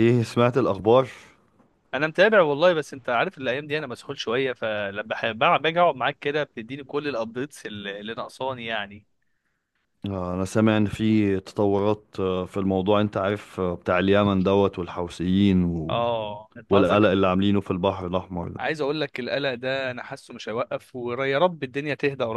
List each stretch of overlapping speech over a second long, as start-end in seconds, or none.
none